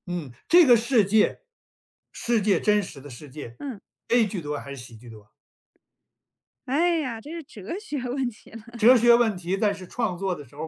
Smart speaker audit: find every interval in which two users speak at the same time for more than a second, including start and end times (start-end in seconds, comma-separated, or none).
none